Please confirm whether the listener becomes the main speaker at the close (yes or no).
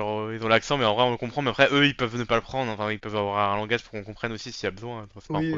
yes